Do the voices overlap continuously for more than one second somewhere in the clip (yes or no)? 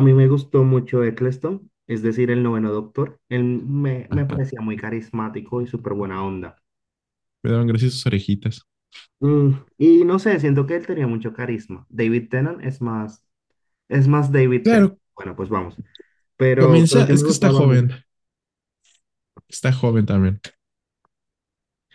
yes